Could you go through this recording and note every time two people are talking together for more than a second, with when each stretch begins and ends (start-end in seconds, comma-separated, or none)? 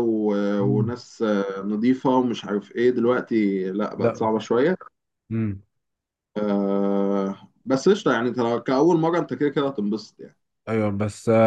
none